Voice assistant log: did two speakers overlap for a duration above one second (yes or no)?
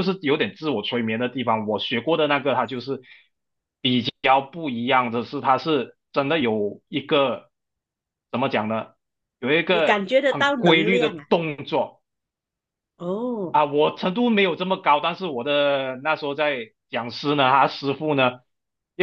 yes